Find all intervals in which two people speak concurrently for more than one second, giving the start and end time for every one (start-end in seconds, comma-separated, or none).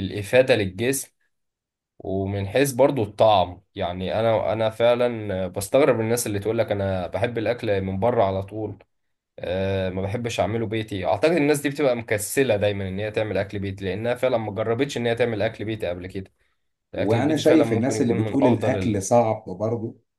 16.9-19.0